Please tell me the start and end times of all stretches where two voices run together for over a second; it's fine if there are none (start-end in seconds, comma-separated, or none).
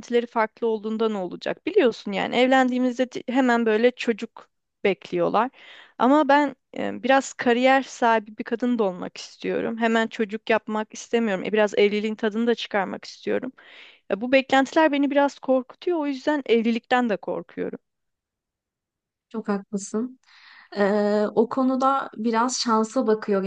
none